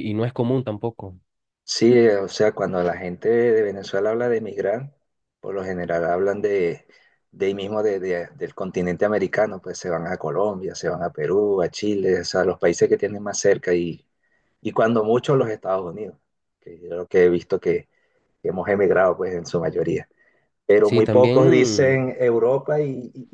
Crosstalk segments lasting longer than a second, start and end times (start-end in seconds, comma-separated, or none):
20.8-22.1